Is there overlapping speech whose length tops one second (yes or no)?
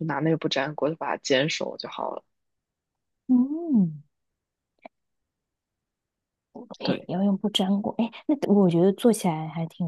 no